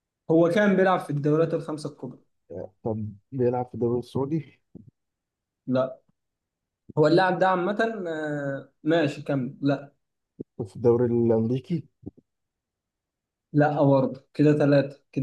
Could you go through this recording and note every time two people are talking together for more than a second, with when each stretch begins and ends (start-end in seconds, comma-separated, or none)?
none